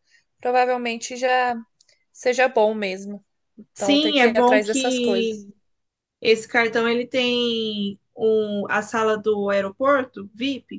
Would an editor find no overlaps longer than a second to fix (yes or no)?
no